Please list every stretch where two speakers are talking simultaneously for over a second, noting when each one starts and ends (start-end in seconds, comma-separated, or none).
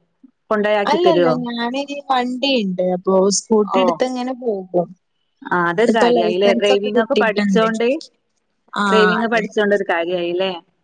5.9-7.7